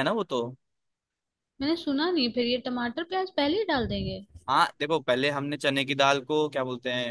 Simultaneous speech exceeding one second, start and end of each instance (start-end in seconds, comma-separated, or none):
none